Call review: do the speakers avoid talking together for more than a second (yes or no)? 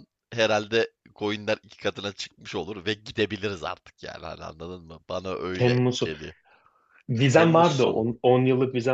yes